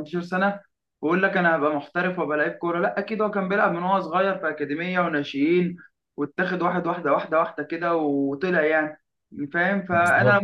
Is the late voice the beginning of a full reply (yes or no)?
no